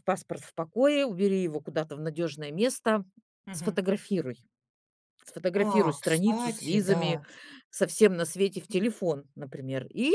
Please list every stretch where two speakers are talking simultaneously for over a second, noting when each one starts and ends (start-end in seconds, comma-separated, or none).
5.5-7.2